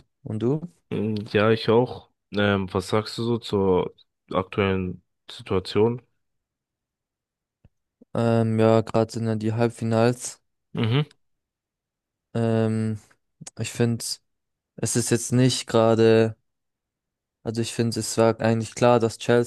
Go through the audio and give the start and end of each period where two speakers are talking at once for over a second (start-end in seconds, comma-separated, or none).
none